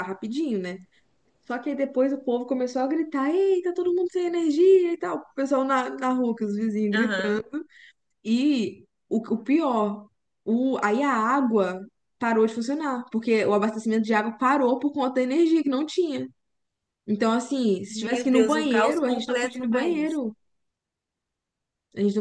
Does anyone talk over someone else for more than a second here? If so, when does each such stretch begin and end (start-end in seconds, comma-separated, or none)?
17.9-20.2